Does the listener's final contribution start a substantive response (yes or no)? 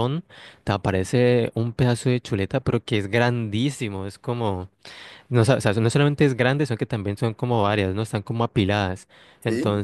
no